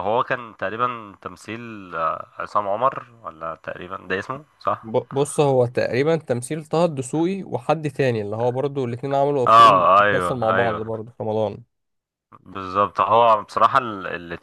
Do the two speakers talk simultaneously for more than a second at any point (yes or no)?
yes